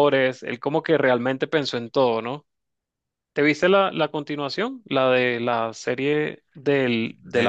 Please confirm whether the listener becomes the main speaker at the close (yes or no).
yes